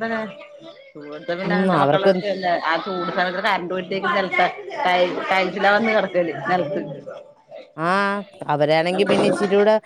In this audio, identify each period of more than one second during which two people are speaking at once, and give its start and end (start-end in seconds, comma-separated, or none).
none